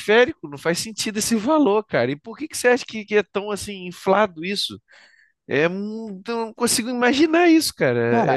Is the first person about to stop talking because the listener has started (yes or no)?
yes